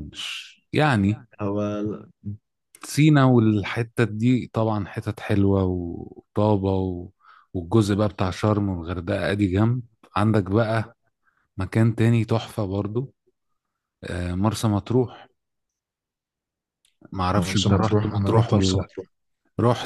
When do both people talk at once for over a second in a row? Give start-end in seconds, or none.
17.3-18.9